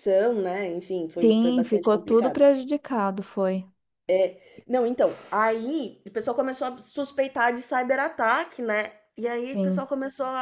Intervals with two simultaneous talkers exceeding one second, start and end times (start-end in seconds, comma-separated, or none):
1.2-2.5